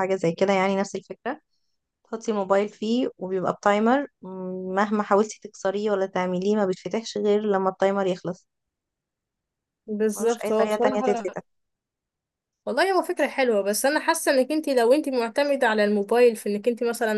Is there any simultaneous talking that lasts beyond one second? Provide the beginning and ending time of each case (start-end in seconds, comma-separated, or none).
10.1-11.3